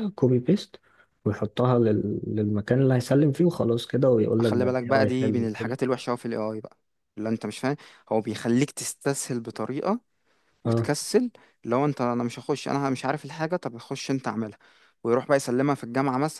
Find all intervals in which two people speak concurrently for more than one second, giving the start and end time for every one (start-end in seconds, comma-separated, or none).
4.4-5.8